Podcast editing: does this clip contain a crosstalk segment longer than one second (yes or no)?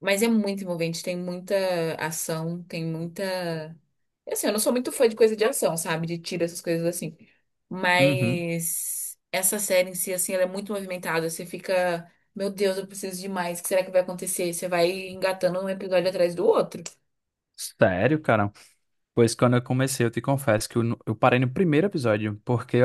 no